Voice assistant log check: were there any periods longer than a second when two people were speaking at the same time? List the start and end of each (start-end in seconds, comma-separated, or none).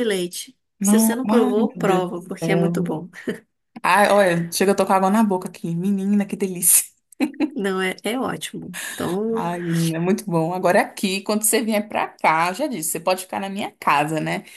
0.8-3.0